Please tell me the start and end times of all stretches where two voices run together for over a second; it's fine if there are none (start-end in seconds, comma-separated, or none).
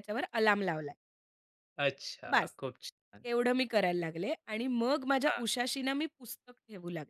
none